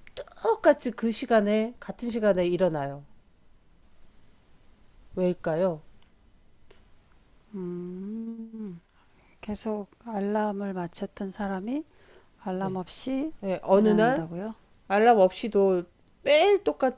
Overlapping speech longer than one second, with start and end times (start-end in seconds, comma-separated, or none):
none